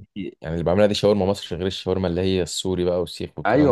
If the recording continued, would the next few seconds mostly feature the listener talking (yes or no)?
yes